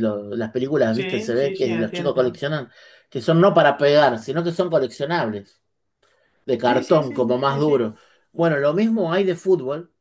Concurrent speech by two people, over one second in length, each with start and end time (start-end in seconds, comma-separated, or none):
0.9-2.4, 6.6-8.0